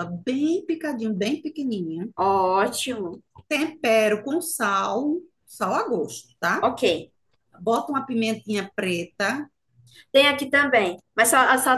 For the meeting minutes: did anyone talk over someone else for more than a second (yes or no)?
no